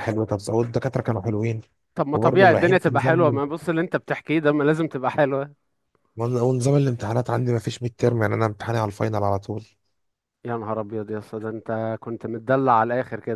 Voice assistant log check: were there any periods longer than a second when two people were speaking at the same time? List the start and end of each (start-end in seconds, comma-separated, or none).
2.1-3.4